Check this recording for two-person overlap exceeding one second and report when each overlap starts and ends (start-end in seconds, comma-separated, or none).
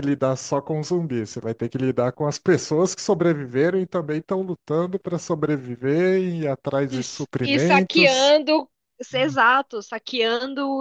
6.9-8.3